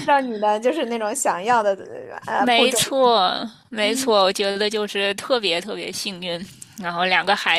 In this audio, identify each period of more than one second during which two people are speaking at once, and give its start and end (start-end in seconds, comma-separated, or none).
none